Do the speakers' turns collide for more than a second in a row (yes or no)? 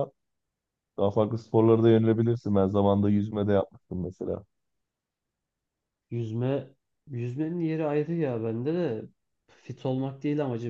no